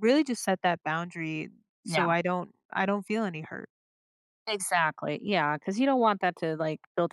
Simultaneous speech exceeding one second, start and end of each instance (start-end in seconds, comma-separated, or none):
none